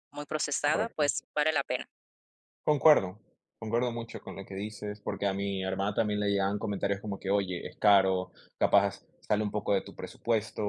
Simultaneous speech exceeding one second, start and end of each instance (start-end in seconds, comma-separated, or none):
none